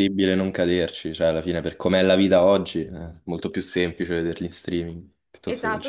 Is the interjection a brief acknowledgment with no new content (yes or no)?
no